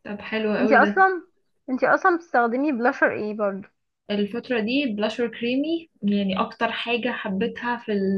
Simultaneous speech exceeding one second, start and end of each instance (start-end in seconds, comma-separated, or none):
none